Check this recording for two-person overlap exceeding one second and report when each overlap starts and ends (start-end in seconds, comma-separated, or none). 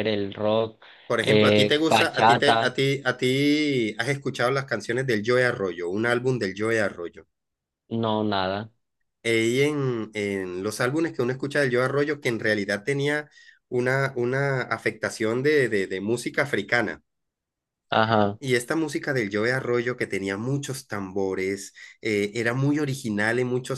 1.2-2.8